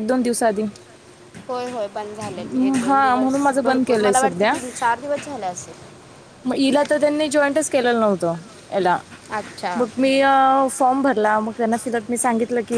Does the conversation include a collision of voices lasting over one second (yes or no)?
yes